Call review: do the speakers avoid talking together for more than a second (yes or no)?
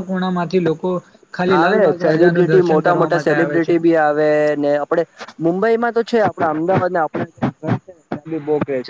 no